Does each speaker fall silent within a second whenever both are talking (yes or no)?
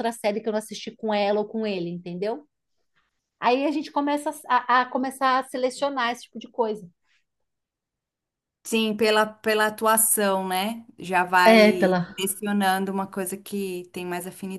yes